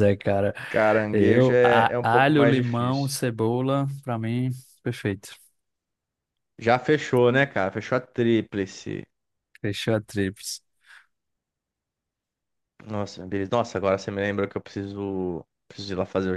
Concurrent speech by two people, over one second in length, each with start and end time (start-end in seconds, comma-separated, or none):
1.1-3.2